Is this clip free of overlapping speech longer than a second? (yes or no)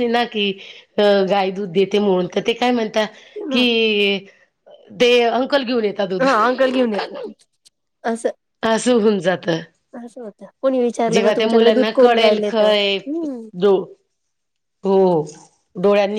no